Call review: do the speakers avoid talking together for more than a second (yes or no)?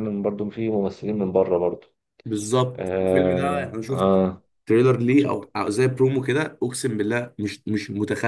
no